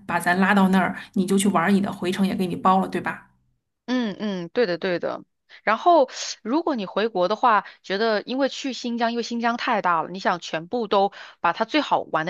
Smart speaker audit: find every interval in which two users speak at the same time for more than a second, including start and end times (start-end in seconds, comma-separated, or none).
none